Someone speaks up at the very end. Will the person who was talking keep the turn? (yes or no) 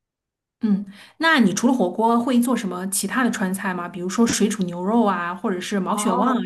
no